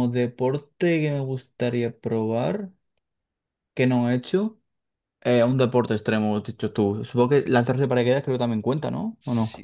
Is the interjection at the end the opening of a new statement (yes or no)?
yes